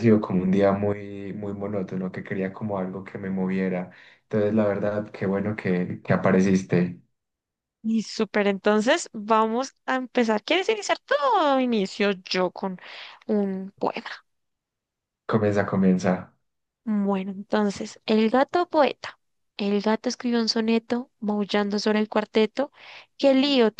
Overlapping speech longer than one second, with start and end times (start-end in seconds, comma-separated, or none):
none